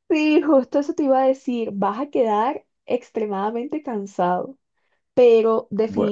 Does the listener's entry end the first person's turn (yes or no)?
no